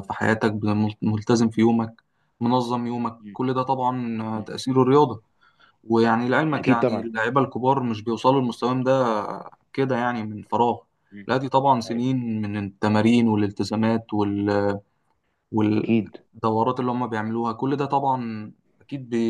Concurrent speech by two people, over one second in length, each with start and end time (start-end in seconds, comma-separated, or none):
none